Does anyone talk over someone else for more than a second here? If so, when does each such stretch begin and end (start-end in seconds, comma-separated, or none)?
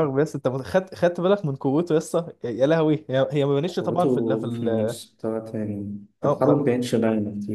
3.7-5.0